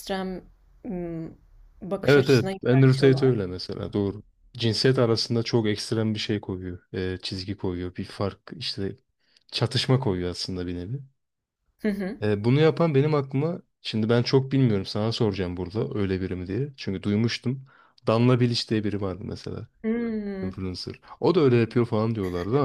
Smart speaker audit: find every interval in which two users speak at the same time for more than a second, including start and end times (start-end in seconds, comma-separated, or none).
2.0-3.4